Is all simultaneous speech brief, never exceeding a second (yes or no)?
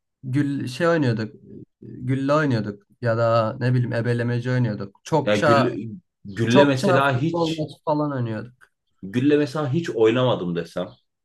no